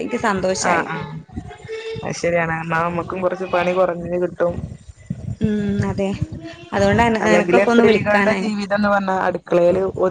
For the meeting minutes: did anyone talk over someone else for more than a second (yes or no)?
no